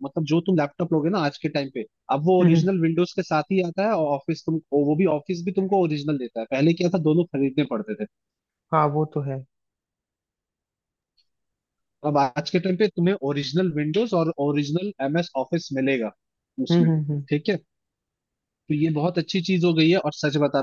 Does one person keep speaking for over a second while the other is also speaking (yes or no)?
no